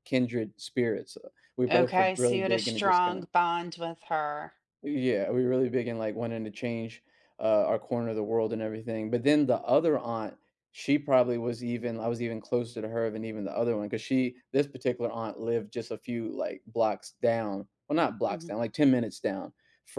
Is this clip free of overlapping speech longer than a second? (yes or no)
no